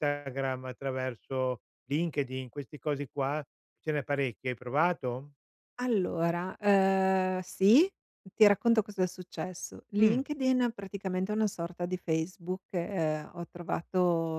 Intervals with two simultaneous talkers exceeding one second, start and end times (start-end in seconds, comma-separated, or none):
none